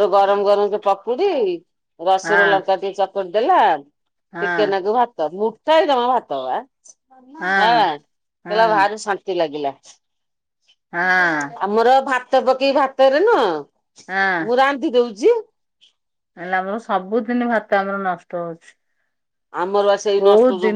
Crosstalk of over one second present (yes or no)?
no